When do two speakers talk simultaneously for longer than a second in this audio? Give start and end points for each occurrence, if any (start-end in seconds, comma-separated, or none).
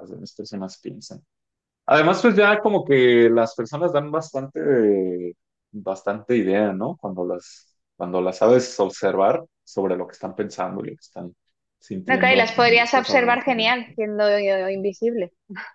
12.1-13.8